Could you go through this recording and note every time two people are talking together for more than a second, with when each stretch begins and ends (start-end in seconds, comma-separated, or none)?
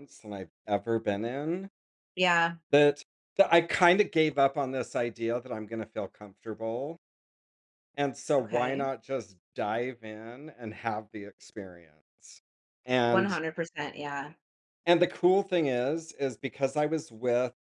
none